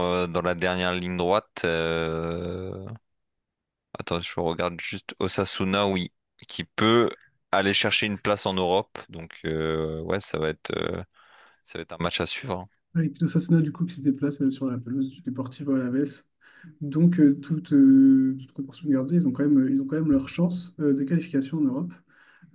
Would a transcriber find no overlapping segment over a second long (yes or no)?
yes